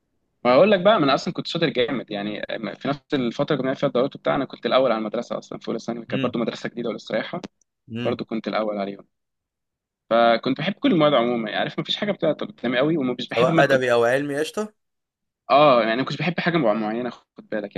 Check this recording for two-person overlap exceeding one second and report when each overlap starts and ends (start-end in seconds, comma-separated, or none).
none